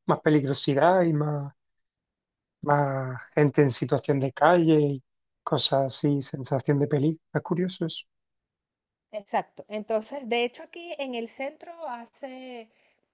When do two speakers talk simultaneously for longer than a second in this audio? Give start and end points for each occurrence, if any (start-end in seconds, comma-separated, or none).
none